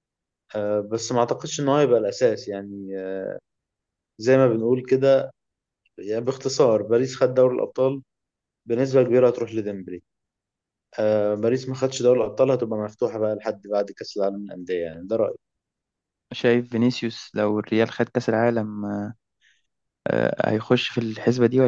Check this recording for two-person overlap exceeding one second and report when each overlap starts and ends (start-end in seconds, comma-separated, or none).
none